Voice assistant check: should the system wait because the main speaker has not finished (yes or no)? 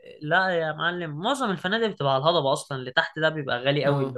yes